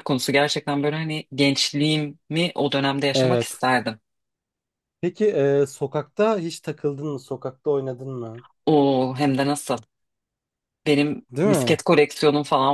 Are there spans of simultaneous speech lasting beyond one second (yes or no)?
no